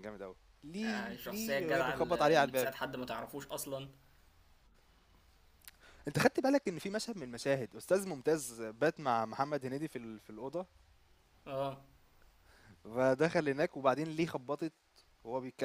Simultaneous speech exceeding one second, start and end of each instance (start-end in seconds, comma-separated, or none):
0.8-2.7